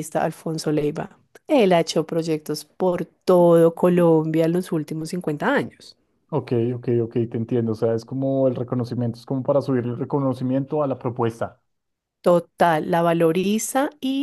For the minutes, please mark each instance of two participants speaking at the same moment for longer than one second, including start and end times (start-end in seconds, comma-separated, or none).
none